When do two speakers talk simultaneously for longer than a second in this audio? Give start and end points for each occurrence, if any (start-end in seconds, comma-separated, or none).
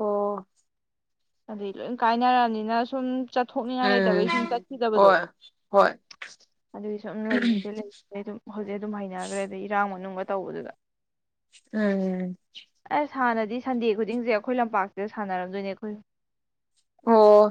none